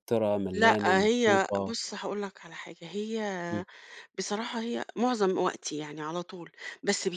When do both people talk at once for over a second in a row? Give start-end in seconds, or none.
0.5-1.8